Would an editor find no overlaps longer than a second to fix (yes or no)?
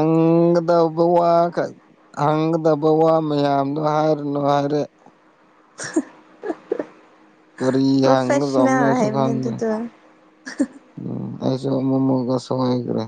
no